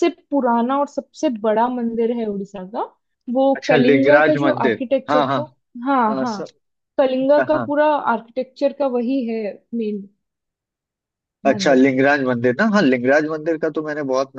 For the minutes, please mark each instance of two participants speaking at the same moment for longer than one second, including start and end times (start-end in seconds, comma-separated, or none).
3.5-5.4